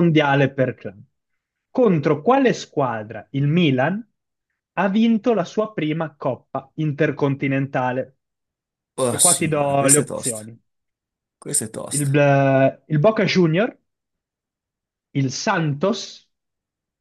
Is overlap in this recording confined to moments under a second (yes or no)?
no